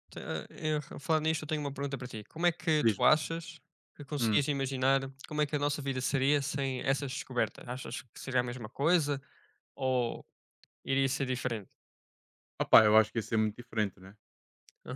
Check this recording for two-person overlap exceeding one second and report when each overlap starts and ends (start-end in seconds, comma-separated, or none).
none